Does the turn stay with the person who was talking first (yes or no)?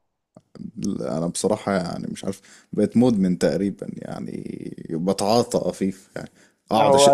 yes